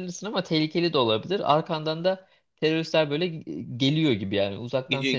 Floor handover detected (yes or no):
yes